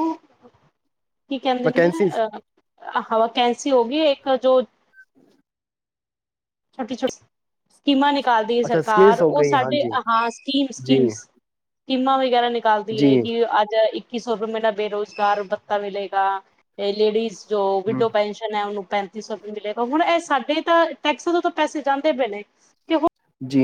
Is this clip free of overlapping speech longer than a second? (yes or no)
no